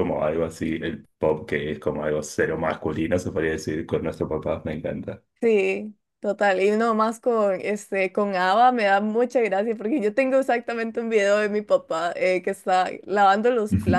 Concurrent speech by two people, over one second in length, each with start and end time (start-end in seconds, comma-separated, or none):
none